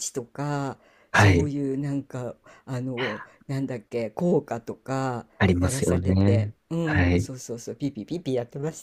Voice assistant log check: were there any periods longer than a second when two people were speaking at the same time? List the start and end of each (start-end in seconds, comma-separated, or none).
5.4-7.3